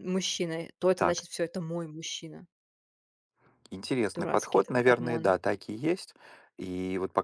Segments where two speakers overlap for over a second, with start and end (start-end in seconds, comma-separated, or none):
4.1-5.3